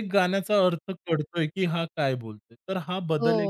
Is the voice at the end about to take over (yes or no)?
yes